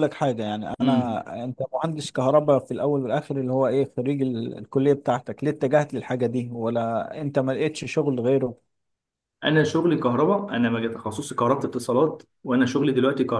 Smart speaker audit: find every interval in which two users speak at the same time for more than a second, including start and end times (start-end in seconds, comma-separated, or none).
none